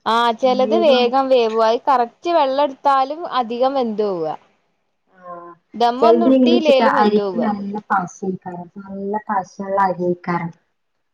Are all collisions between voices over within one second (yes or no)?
no